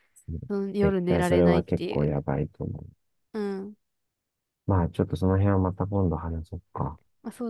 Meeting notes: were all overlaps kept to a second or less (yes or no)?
no